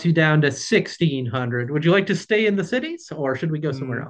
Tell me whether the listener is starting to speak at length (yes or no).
yes